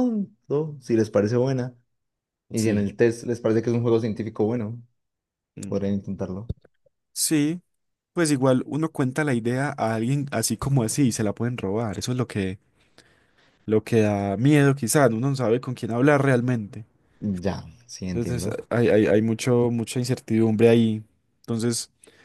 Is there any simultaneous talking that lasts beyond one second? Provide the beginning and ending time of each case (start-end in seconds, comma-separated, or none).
none